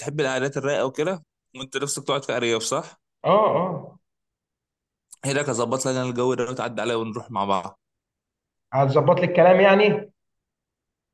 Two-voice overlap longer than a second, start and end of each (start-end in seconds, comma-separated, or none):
none